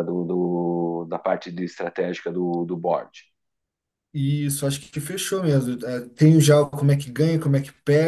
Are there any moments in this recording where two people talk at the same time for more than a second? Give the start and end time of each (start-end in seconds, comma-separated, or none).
none